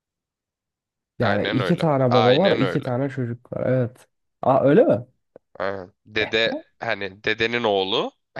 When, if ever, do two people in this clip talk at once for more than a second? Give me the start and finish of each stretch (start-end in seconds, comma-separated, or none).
1.2-2.9